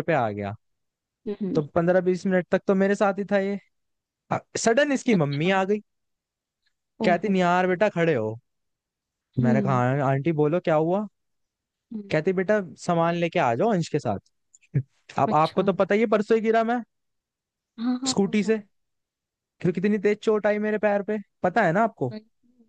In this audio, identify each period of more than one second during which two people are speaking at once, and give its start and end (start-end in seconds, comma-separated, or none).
none